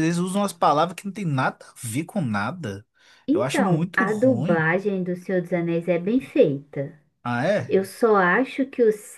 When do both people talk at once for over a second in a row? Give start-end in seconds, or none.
3.3-4.6